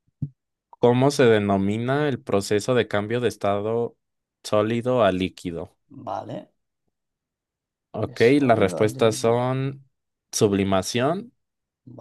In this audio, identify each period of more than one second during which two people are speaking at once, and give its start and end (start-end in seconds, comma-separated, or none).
8.0-9.5